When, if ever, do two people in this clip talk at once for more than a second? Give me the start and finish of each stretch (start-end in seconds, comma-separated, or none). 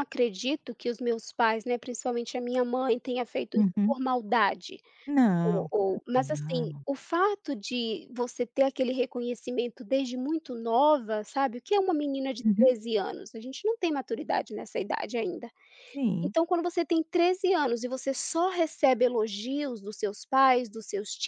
5.4-6.8